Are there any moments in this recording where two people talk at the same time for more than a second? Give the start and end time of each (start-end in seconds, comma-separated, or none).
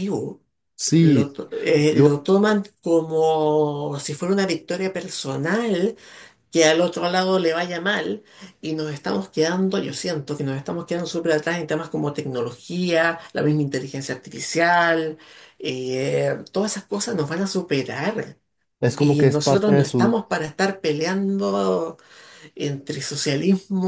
19.0-20.2